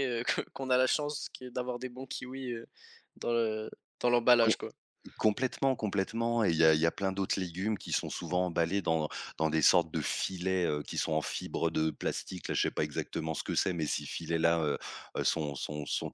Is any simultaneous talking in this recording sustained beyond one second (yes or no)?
no